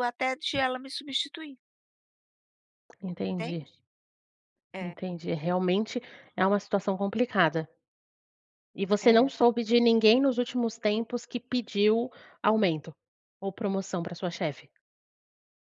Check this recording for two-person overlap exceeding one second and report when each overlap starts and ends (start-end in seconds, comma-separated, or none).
none